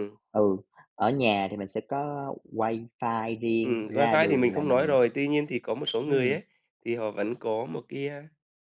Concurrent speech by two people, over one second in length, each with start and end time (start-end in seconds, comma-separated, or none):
3.6-5.0